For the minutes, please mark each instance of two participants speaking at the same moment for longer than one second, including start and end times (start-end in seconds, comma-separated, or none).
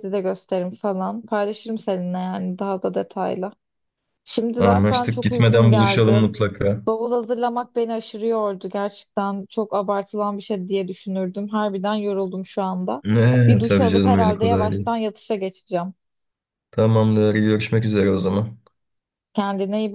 4.6-6.2, 13.5-15.0